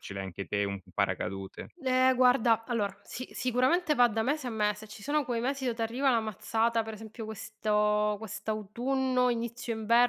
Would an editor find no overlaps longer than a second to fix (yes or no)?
yes